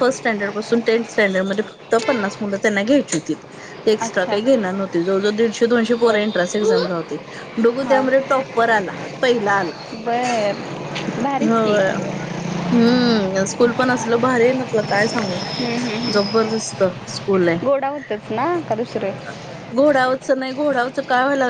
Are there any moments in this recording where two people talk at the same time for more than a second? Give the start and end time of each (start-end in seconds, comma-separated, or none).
none